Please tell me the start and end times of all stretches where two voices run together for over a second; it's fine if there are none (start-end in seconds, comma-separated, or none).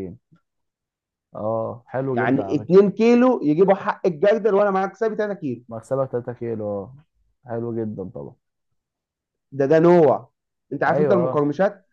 none